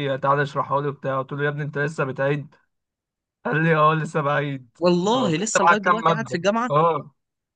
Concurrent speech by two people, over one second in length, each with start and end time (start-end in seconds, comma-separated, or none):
4.8-6.7